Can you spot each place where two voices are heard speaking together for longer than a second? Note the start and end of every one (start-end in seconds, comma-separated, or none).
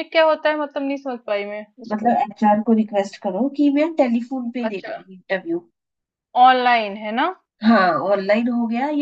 none